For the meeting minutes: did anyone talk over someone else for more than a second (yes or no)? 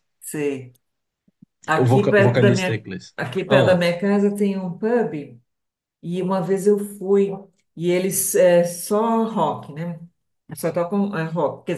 yes